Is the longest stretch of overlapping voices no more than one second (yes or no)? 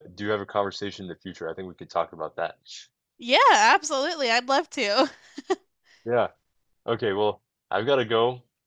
yes